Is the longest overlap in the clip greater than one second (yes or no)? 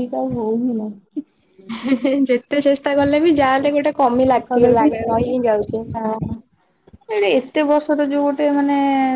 no